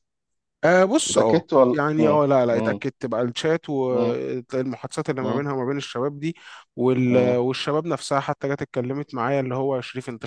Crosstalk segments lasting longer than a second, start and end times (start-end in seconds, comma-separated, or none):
1.1-2.8